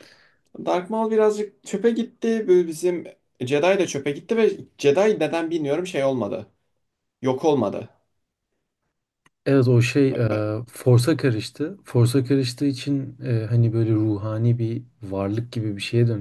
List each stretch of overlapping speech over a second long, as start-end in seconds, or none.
none